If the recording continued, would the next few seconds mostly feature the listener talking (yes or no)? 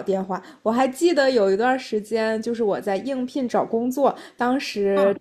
no